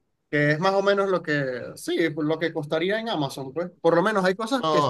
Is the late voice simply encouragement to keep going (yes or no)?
yes